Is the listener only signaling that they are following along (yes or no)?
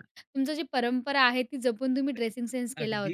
no